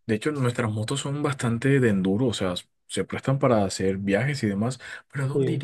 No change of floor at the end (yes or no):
yes